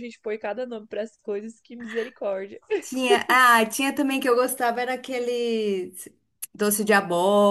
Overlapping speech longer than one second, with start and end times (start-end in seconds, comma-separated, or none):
none